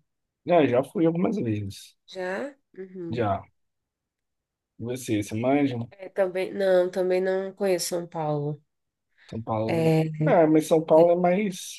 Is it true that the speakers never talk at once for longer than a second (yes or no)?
yes